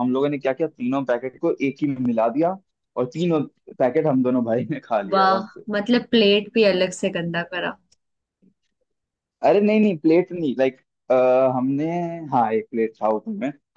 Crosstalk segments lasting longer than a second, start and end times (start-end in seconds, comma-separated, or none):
none